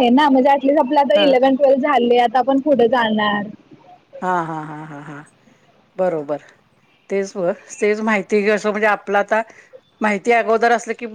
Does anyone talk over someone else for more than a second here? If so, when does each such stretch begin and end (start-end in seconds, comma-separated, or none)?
none